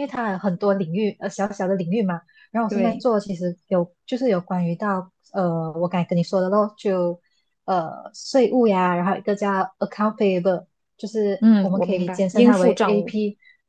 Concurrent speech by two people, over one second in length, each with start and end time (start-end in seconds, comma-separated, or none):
11.4-13.1